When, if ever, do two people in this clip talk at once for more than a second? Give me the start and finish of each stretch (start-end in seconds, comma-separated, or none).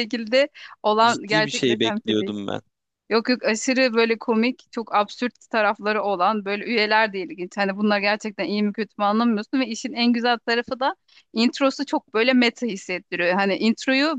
1.0-2.3